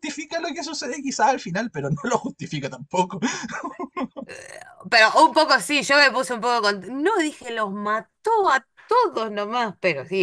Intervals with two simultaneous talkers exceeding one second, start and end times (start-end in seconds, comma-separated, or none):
none